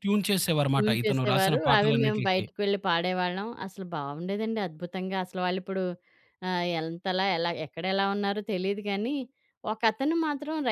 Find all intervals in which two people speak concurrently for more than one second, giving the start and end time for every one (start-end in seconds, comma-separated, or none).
0.7-2.4